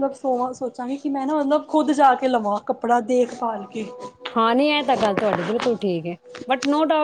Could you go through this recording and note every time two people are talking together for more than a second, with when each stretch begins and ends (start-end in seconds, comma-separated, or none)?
none